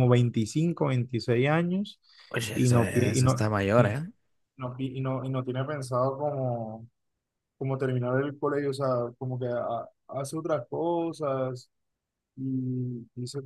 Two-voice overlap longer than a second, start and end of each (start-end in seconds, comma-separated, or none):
2.5-3.9